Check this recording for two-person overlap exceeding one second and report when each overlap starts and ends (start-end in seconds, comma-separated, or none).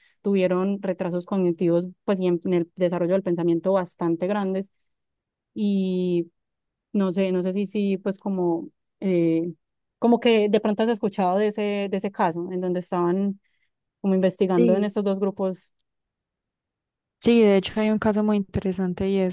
none